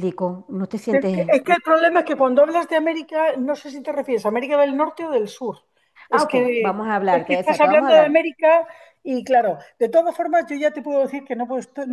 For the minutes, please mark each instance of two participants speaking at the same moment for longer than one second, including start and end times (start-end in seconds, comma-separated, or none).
6.1-8.3